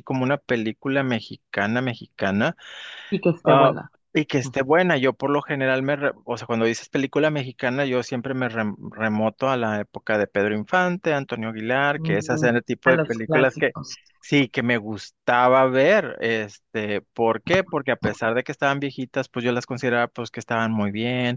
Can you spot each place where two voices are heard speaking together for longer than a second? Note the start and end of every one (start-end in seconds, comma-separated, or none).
12.0-13.8